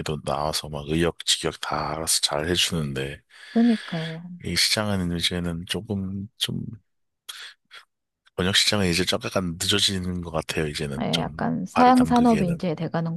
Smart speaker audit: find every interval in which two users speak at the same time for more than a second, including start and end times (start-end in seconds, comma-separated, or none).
11.0-12.7